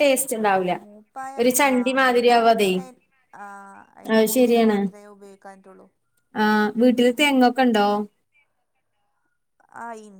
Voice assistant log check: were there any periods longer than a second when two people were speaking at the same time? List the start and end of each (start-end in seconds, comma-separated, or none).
none